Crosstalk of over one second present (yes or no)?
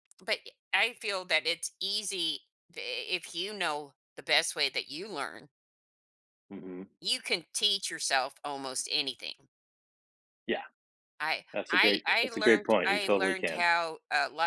yes